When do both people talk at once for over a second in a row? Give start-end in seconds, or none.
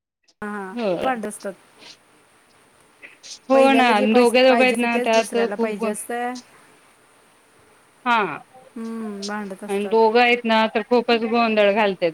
3.5-5.8